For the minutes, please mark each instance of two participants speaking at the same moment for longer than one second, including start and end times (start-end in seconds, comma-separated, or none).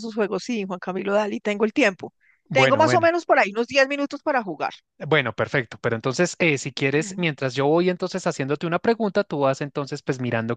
none